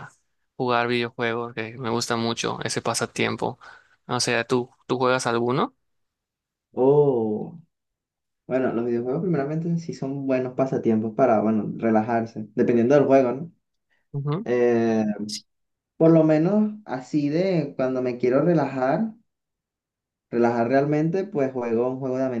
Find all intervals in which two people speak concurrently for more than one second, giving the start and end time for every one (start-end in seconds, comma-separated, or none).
none